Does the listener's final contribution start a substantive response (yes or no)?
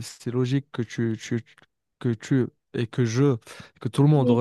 no